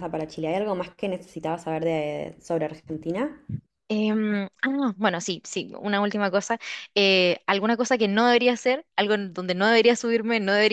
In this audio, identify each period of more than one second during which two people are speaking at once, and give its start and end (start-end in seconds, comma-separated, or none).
none